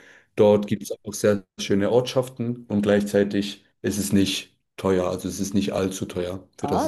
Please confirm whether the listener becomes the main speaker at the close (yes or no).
yes